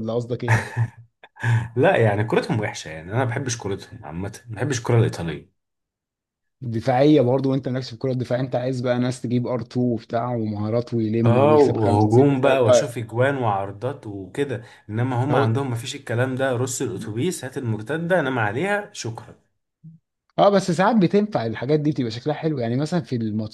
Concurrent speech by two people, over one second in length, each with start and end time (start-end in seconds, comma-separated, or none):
11.2-12.9